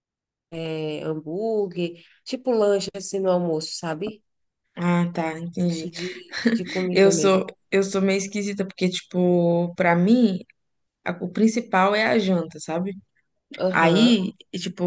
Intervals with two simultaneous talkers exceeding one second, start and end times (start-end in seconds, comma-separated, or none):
none